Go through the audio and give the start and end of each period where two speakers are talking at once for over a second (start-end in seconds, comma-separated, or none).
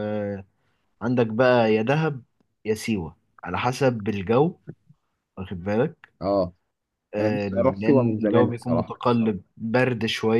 7.2-8.9